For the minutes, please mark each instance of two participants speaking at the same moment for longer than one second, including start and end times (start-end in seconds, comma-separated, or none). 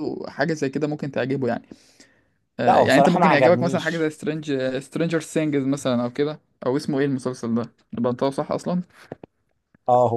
2.7-4.1